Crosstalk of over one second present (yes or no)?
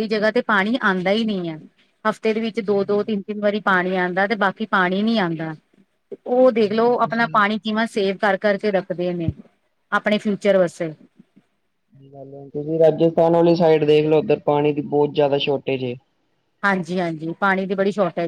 no